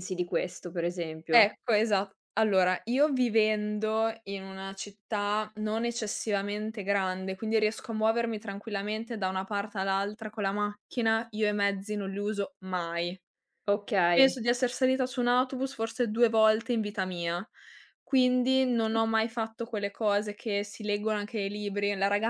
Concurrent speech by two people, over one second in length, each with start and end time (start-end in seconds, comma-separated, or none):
none